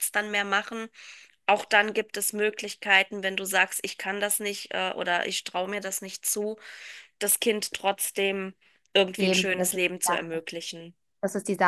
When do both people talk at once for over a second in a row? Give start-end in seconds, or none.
9.2-10.4